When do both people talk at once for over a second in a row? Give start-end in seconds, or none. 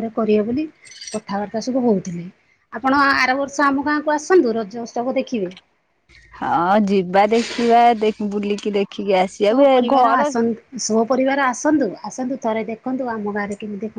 none